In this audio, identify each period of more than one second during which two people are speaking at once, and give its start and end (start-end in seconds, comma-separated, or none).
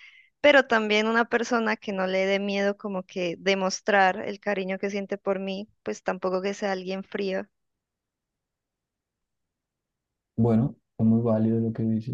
none